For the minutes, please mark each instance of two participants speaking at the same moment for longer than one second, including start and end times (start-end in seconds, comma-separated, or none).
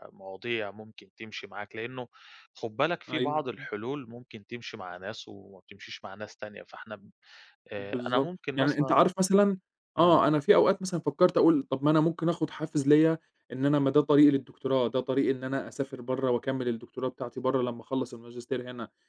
7.8-9.0